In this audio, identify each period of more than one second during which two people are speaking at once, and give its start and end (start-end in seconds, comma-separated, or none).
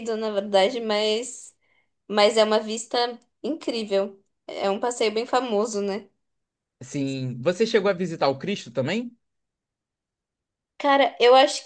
none